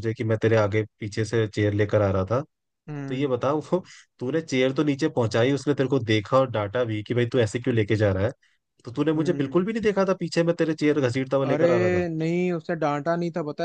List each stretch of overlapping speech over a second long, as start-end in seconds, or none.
none